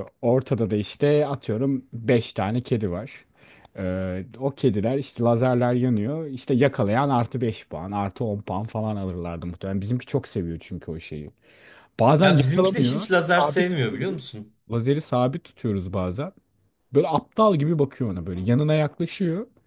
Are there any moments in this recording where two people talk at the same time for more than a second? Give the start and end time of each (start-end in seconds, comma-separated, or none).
12.2-14.2